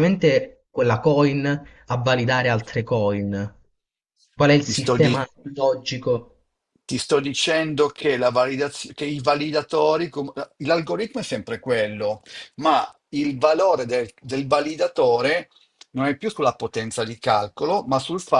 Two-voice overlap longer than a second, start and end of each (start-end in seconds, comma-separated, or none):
none